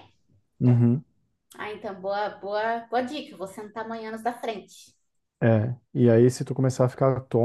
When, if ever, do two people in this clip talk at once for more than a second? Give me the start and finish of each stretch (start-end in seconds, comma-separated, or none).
none